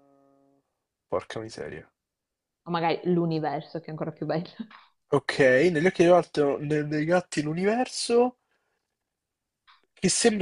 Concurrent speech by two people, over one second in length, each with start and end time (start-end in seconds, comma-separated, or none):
none